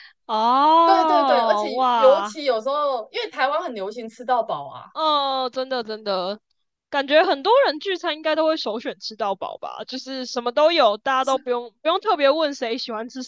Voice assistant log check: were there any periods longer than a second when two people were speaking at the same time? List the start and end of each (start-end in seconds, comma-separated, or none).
0.8-2.3